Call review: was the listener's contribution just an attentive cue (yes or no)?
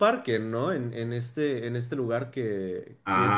no